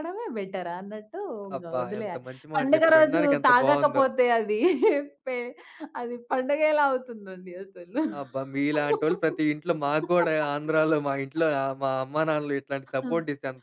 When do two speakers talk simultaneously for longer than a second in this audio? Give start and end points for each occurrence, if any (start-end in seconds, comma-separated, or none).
1.6-4.0